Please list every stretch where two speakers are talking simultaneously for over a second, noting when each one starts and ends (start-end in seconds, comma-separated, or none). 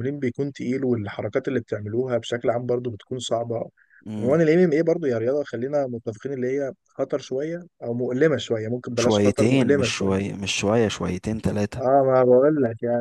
8.9-10.3